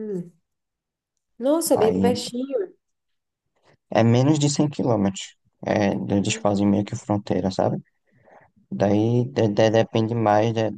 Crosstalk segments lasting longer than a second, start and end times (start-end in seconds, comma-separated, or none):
none